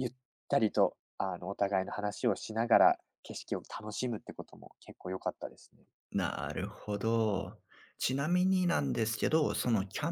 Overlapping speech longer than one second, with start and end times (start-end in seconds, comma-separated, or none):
none